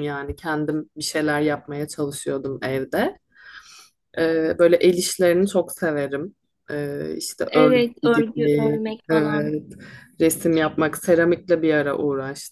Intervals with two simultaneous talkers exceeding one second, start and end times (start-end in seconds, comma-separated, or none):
7.5-9.5